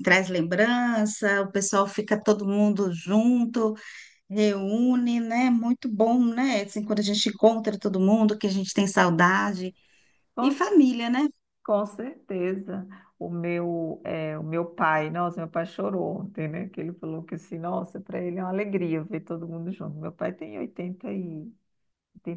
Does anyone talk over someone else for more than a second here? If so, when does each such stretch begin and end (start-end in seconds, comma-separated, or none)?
none